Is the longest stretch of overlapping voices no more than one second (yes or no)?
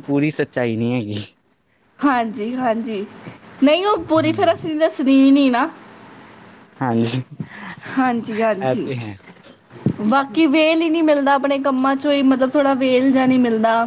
yes